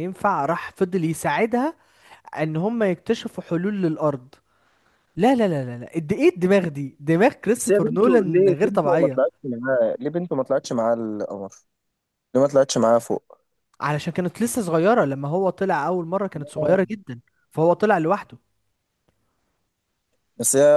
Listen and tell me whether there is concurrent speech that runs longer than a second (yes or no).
yes